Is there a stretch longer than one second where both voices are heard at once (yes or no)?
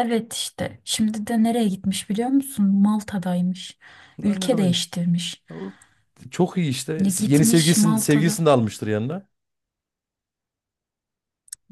yes